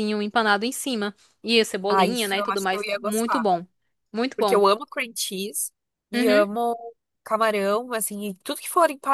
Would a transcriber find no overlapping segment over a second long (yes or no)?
no